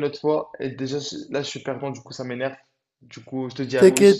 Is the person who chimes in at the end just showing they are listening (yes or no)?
no